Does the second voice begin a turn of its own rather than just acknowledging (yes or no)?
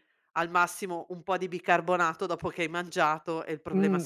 yes